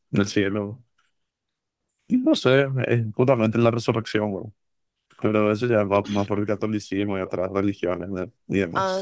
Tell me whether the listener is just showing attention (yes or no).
no